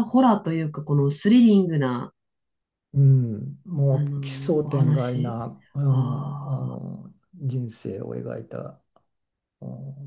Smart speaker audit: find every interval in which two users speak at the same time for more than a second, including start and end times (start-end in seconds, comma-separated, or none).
3.9-5.4